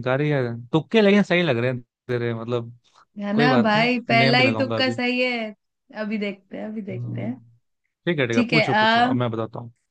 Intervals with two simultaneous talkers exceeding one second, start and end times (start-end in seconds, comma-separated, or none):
3.3-5.0